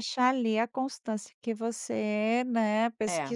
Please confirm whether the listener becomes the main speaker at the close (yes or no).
no